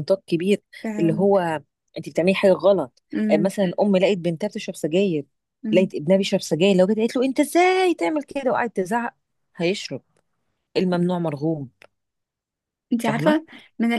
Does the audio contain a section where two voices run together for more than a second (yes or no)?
no